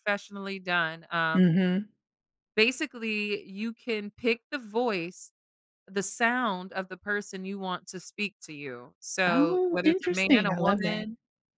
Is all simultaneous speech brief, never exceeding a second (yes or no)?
no